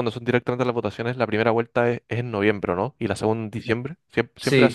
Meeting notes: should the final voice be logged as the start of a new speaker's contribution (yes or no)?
yes